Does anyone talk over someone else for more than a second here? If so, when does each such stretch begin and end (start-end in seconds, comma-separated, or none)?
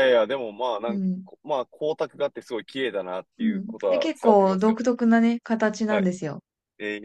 3.4-4.8